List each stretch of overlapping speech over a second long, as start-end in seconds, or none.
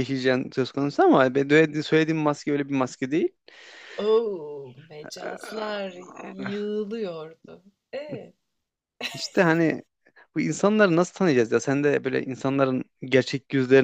none